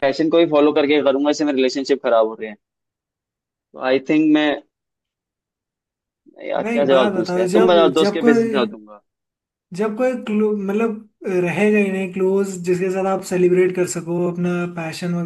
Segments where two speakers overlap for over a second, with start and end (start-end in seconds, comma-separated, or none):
6.6-8.5